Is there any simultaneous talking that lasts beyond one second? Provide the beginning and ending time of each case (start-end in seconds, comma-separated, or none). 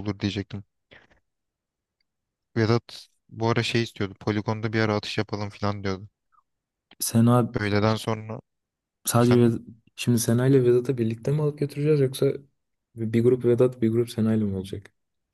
none